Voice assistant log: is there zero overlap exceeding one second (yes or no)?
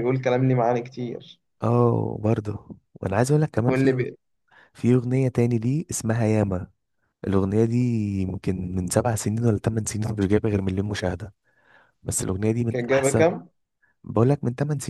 yes